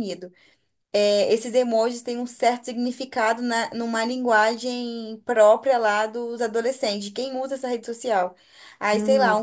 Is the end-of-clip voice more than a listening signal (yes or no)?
no